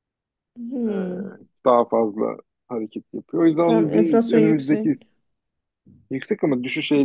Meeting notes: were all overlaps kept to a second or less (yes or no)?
no